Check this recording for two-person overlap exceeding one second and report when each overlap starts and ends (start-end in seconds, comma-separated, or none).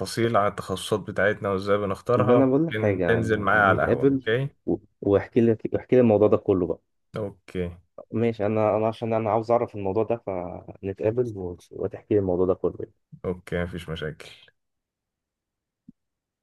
2.2-4.3